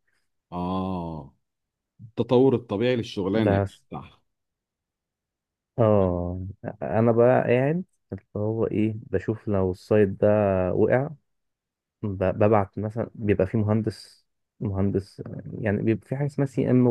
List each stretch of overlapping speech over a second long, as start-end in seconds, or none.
none